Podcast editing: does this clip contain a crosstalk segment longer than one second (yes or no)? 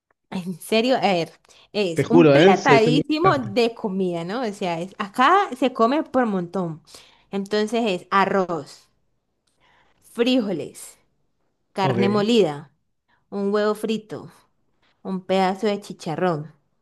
yes